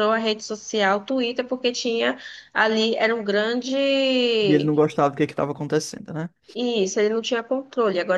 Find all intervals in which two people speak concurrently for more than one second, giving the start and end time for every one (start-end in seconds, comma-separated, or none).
none